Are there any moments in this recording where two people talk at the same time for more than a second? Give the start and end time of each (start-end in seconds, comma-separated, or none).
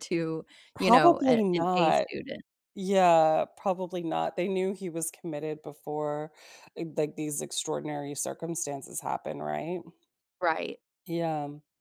0.8-2.1